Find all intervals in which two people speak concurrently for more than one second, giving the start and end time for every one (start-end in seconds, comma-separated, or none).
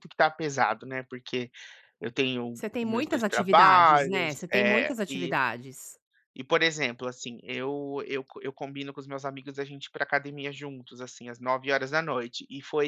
2.5-5.3